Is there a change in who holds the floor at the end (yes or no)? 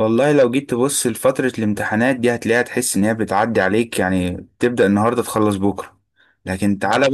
no